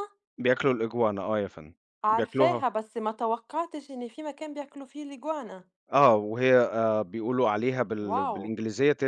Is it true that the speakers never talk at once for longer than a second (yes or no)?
yes